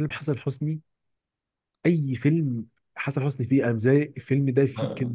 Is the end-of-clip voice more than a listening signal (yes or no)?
yes